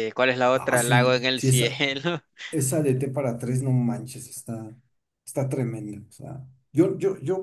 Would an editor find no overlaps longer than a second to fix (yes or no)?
no